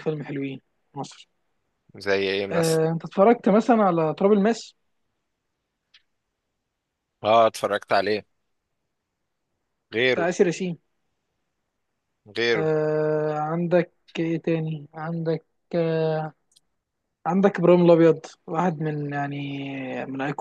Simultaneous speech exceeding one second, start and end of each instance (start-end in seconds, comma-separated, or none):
none